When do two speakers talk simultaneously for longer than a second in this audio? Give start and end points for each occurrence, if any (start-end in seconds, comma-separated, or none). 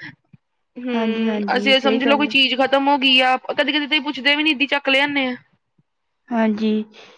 0.9-2.3